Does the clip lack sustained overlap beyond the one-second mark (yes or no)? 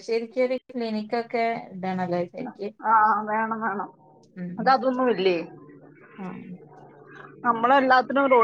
yes